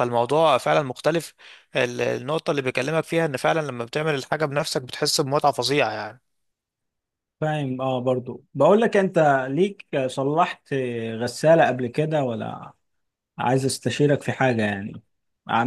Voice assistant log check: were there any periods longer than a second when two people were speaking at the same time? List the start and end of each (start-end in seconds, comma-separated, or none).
none